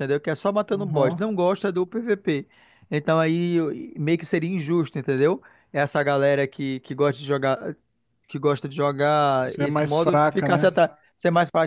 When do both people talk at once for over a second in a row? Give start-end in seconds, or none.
9.4-10.8